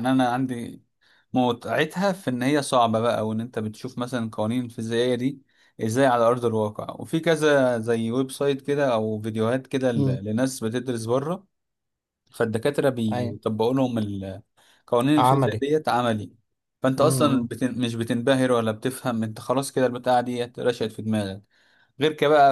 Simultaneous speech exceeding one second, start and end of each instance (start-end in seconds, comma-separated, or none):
none